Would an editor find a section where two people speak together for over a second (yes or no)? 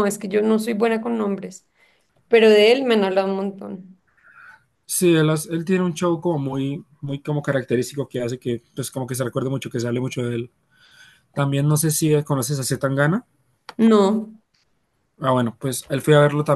no